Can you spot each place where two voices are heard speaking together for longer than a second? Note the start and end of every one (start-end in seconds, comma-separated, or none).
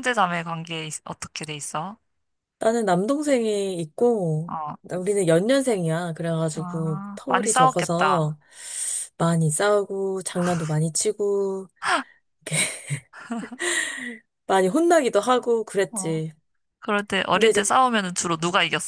6.5-8.3